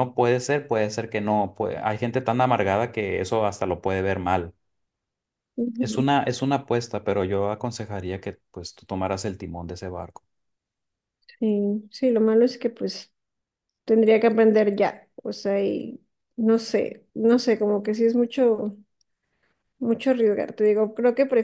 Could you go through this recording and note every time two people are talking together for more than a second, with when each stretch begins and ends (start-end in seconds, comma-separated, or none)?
none